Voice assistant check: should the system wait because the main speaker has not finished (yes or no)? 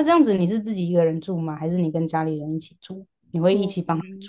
no